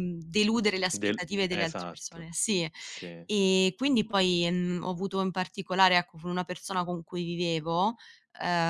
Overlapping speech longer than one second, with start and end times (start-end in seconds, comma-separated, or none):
0.9-2.3